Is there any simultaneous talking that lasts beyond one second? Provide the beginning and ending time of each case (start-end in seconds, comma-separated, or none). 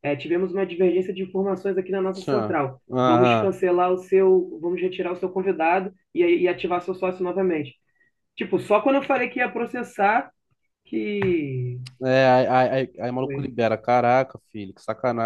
2.1-3.6